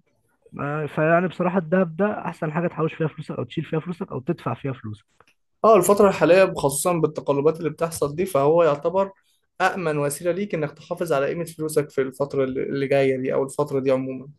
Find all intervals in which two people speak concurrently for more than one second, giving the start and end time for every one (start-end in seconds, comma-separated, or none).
none